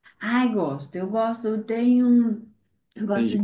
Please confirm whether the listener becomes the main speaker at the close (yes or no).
no